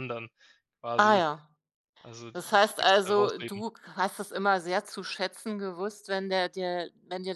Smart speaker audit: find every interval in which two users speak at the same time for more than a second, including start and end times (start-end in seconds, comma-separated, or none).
2.3-3.6